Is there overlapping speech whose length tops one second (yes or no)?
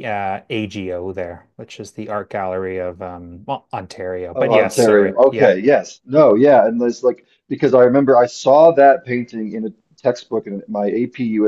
yes